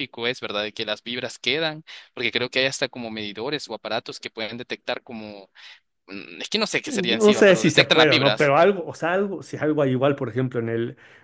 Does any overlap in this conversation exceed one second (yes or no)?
yes